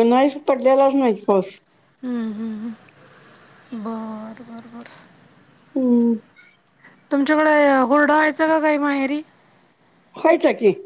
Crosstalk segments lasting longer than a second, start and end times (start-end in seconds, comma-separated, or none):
none